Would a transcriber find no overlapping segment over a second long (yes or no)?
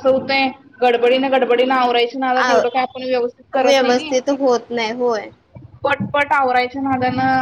no